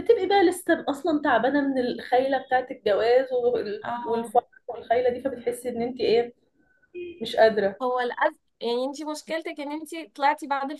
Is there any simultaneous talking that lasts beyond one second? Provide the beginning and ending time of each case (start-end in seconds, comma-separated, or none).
none